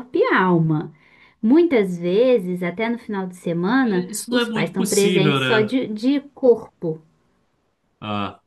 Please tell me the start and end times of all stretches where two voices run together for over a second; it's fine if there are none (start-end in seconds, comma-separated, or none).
3.8-5.8